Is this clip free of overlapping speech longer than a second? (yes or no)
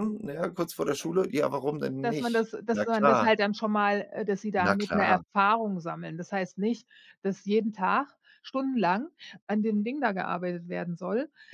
no